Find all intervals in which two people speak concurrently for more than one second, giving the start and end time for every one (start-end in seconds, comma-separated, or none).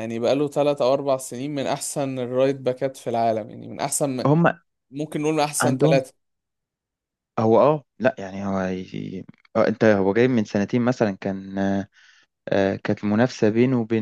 none